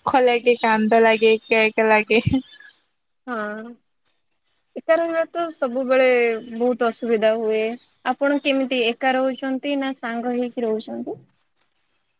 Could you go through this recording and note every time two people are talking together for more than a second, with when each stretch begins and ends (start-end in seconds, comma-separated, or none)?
none